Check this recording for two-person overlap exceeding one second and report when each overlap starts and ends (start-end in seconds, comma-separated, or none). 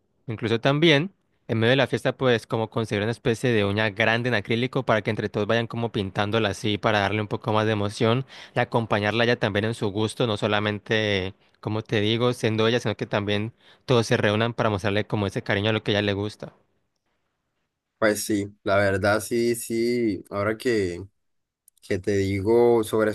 none